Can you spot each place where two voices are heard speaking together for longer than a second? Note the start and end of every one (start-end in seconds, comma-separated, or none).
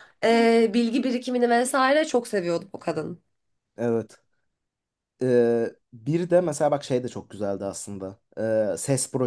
none